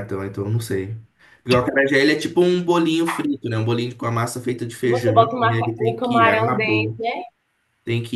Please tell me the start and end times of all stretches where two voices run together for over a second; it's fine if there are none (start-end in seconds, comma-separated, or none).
4.8-7.0